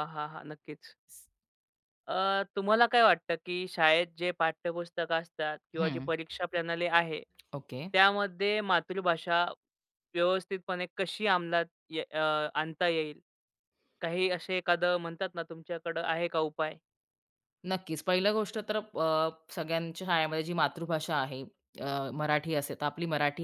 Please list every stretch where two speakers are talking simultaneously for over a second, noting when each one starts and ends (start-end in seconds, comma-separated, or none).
none